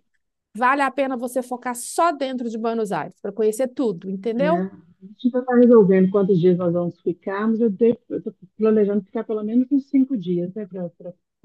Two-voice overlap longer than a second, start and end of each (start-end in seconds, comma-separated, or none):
none